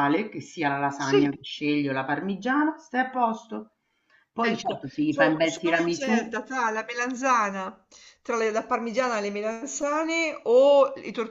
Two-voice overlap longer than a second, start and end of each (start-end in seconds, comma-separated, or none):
4.5-6.4